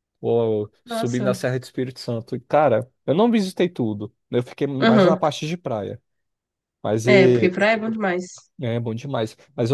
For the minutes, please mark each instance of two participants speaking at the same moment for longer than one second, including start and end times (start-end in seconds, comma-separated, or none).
none